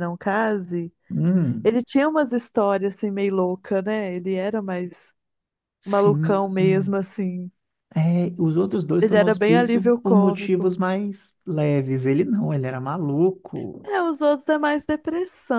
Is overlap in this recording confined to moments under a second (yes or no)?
no